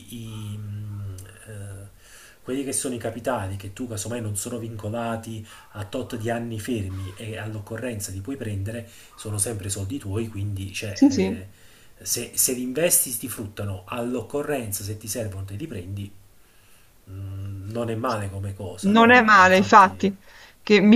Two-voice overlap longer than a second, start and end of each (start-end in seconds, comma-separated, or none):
18.8-20.1